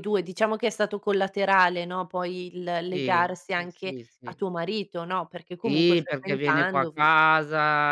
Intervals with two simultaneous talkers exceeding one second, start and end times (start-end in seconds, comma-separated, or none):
2.9-4.4, 5.6-7.1